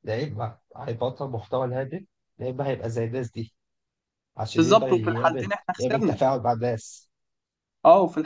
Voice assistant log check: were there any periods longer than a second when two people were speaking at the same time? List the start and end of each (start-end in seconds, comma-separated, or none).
4.6-6.2